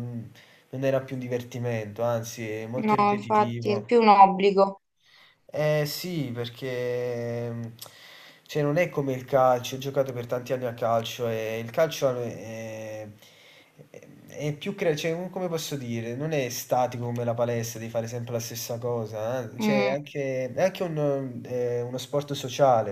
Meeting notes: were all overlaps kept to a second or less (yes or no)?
no